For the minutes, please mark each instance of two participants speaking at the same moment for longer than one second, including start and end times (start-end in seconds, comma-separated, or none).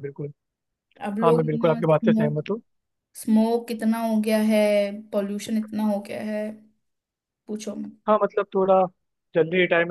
1.2-2.5